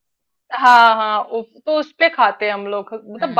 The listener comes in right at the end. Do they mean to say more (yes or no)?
no